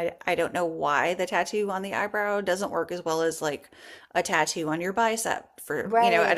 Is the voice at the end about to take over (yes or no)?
yes